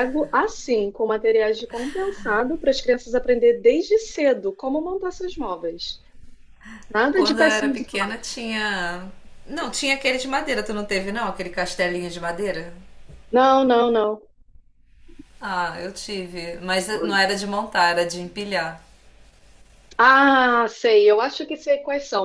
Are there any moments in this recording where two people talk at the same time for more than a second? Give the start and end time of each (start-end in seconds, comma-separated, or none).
7.1-8.3